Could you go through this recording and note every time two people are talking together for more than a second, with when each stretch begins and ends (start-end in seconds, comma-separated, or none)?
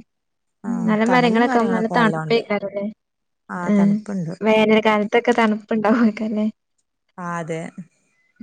0.9-2.4